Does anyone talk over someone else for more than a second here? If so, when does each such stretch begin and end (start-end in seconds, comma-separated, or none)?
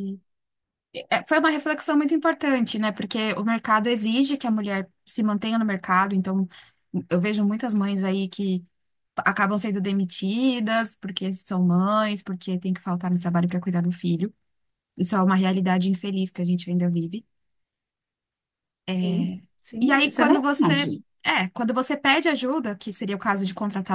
19.8-21.0